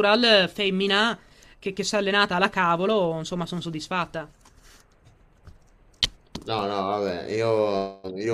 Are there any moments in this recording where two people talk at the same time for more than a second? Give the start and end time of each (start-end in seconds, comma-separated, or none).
none